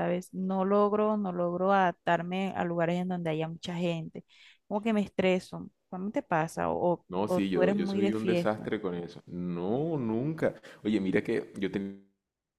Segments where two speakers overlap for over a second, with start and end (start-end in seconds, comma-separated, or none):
7.1-8.7